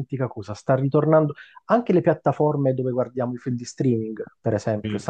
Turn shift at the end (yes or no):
no